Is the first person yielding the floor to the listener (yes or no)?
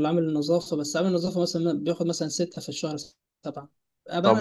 yes